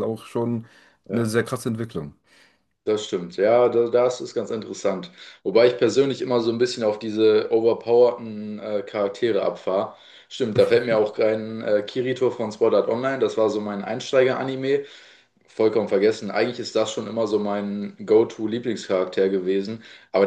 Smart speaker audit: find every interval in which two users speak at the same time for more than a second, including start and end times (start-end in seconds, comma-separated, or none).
none